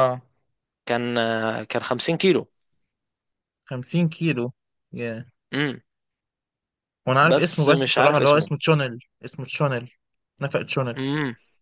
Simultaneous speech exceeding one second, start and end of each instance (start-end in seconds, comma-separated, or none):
7.3-8.5